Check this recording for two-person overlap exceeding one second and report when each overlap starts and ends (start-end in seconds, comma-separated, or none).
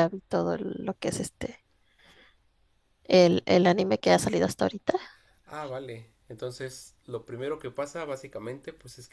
none